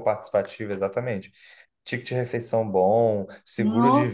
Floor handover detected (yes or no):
no